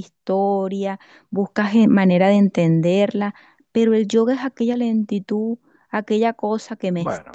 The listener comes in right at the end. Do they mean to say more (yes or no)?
yes